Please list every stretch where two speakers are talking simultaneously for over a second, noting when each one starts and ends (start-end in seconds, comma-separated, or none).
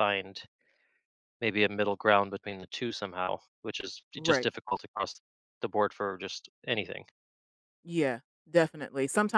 none